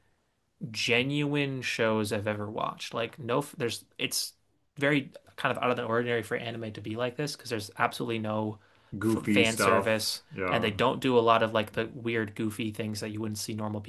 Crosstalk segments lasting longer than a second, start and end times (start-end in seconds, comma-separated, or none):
9.2-10.7